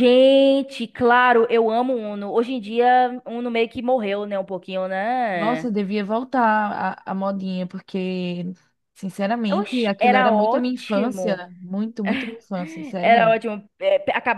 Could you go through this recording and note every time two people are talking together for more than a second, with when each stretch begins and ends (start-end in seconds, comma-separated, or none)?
9.6-11.5